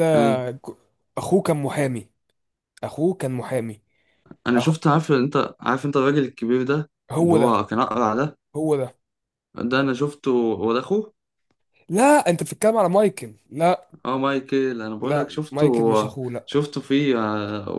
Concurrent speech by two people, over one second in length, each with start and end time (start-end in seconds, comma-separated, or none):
15.0-16.5